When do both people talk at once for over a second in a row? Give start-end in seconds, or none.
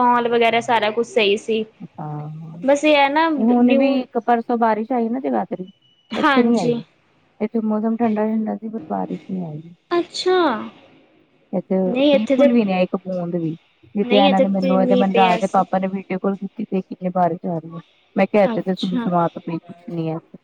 14.0-15.6